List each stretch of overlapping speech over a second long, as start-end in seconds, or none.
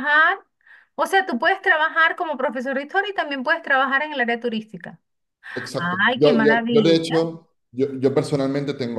5.8-7.3